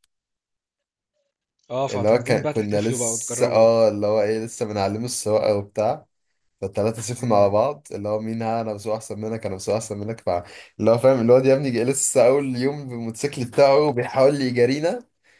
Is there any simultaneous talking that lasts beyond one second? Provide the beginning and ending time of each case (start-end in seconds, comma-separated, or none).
1.9-3.7